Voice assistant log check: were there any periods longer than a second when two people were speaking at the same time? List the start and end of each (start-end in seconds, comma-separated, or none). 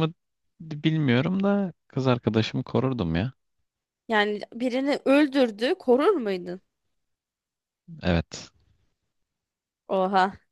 none